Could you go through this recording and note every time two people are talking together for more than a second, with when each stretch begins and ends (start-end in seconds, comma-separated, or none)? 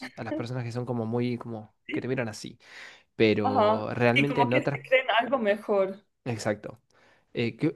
3.4-4.8